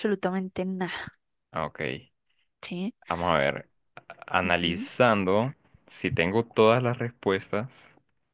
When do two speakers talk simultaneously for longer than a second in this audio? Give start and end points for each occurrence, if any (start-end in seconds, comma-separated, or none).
none